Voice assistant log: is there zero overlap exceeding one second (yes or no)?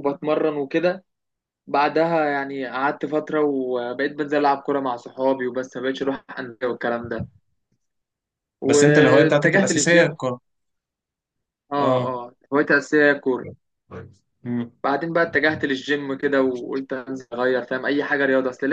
no